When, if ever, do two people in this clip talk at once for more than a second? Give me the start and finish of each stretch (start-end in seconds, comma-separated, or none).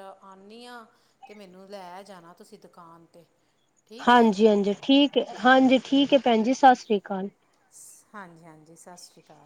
none